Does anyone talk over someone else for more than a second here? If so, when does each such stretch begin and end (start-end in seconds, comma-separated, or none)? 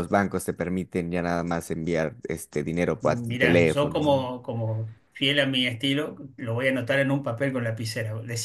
3.0-4.3